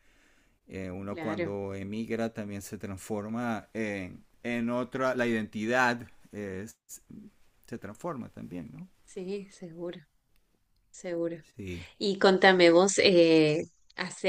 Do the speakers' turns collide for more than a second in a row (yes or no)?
no